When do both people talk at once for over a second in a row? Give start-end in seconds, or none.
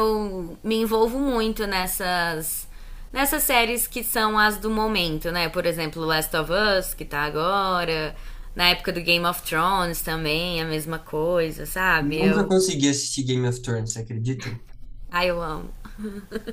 none